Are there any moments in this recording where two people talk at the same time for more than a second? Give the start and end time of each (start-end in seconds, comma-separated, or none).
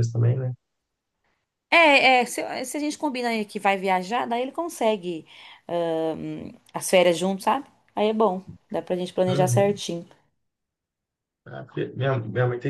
none